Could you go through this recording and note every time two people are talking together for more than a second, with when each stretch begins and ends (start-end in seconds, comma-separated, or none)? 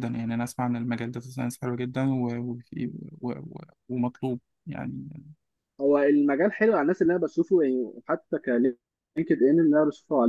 none